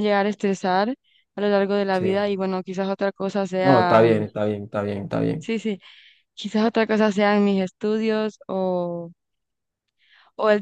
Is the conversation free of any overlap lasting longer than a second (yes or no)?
yes